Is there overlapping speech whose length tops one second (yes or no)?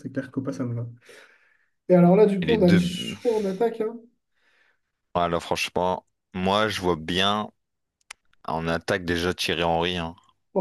no